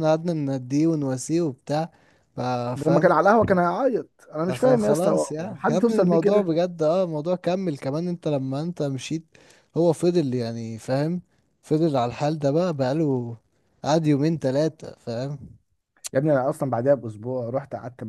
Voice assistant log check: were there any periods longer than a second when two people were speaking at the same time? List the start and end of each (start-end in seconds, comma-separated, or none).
4.5-6.5